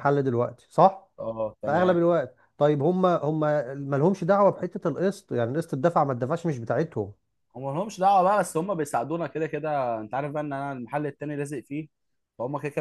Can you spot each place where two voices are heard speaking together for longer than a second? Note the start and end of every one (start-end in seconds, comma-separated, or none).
none